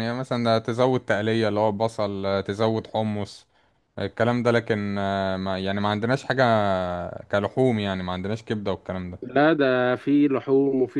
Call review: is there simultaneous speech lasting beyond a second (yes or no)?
no